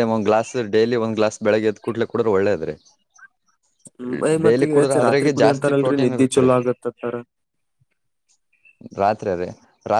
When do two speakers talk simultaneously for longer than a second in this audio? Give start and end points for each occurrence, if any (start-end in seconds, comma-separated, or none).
4.5-6.5